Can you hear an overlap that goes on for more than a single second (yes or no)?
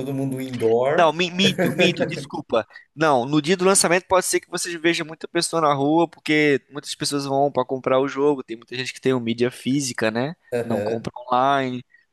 no